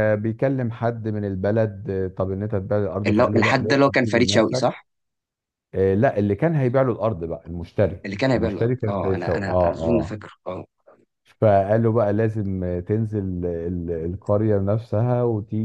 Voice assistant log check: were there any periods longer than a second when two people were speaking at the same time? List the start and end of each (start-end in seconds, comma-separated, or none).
3.1-4.8, 8.0-10.2